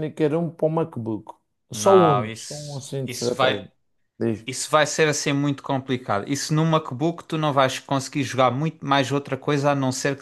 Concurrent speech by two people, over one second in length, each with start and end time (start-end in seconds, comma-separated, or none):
1.7-3.7